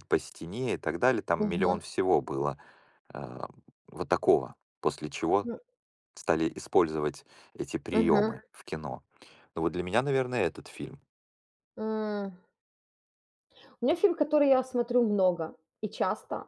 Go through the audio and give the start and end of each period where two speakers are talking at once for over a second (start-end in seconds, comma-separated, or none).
none